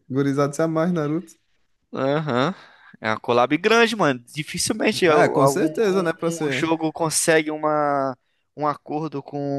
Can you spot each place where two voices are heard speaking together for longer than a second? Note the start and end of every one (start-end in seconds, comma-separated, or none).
5.0-6.7